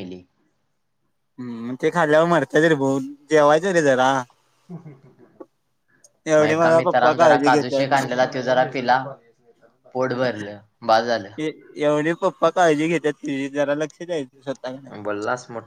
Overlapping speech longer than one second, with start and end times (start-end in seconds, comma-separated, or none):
6.4-8.1